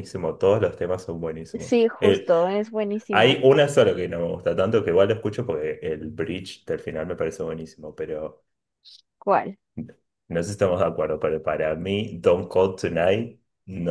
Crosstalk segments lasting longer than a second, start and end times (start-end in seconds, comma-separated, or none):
none